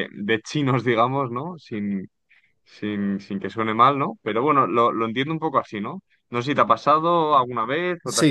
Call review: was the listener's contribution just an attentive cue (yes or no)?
no